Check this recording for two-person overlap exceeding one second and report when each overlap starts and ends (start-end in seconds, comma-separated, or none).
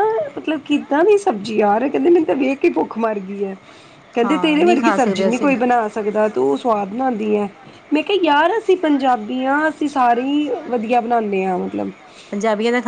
4.2-5.5